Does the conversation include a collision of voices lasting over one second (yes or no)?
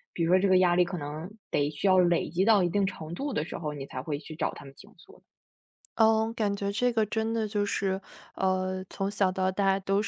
no